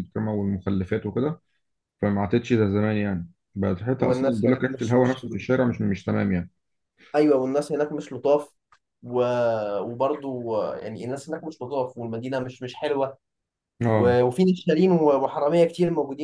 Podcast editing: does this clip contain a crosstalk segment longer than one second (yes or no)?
yes